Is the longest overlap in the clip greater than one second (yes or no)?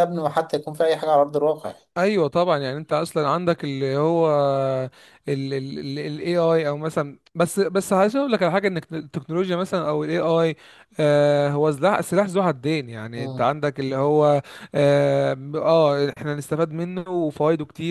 no